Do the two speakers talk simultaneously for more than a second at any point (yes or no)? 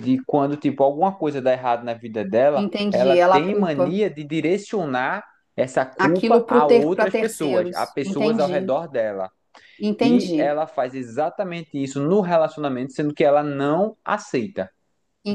yes